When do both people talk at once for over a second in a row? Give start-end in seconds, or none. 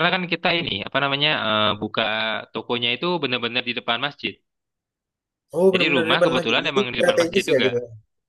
5.7-7.7